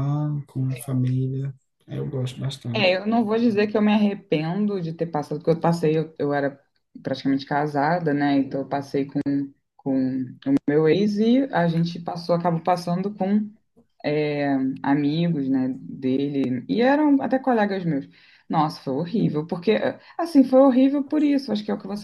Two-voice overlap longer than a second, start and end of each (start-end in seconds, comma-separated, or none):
none